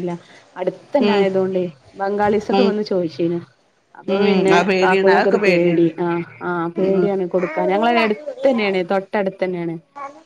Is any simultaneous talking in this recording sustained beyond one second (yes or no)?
yes